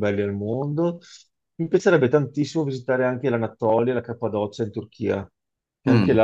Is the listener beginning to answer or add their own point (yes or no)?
no